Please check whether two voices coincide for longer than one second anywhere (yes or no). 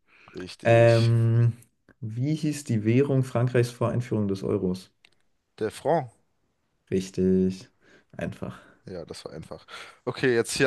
no